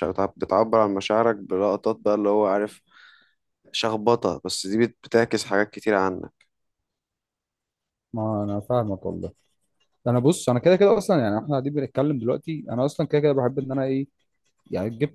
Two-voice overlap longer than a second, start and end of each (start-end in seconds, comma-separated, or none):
none